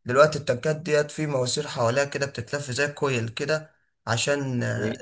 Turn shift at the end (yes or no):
no